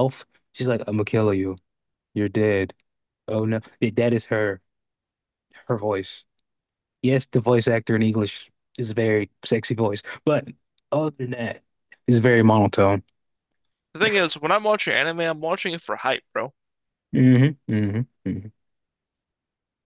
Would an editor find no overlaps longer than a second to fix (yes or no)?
yes